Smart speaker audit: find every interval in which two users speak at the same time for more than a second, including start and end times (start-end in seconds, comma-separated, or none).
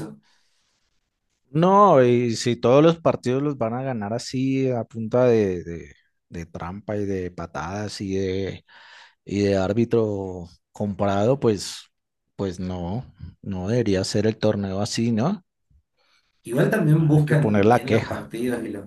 17.0-18.3